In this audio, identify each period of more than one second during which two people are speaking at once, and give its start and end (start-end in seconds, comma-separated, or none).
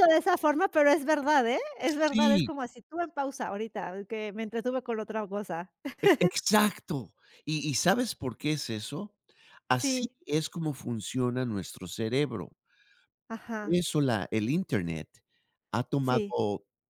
none